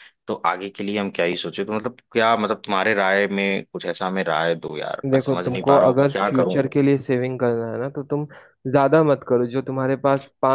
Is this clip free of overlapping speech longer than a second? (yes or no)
no